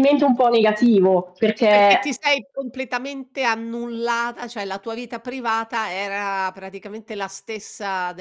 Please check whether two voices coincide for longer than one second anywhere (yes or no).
no